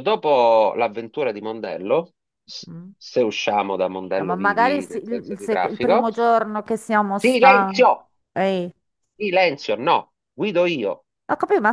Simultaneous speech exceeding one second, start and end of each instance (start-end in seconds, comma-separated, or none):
4.2-6.1